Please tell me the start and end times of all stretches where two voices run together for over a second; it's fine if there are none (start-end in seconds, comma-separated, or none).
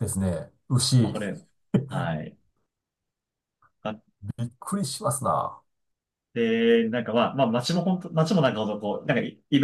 none